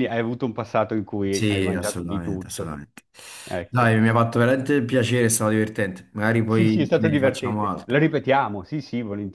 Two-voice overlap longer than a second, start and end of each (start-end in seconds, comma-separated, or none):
1.3-2.8, 6.5-8.0